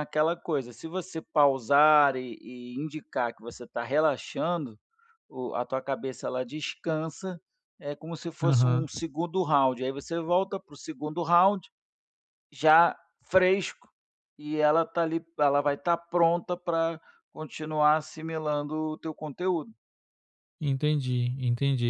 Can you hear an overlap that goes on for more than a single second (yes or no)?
no